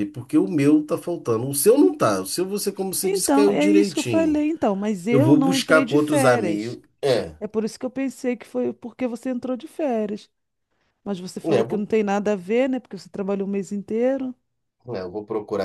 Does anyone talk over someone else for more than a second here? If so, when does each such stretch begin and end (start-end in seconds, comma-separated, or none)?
3.0-4.4, 5.1-6.8